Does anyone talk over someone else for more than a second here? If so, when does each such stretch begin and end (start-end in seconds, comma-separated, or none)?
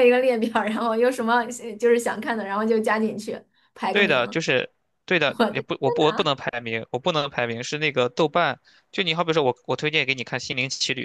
none